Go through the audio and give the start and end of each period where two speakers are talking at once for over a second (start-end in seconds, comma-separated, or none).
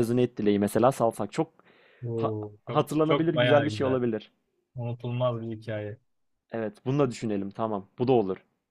2.1-4.0